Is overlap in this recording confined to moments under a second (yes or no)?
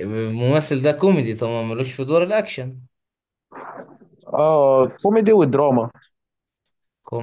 yes